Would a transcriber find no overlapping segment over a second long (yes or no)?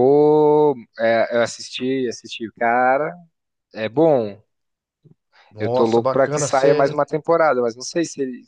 no